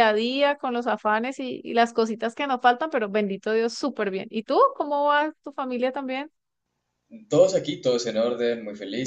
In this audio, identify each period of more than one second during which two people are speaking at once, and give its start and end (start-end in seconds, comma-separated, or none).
none